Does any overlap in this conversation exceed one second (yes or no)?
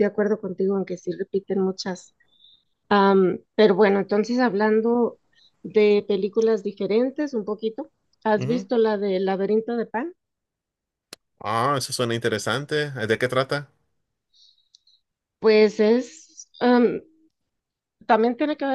no